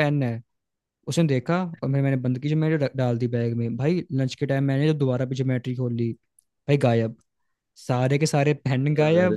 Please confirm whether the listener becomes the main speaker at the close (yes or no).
no